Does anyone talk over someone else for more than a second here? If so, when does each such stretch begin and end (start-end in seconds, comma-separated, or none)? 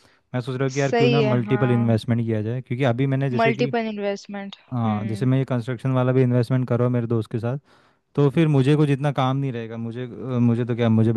0.7-2.0